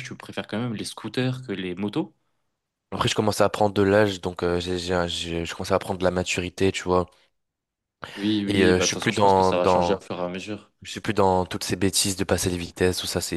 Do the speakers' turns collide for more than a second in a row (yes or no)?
yes